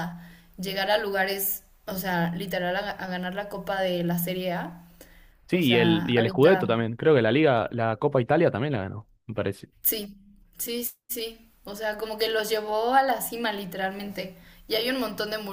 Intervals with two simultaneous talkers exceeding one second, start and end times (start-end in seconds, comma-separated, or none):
5.5-6.8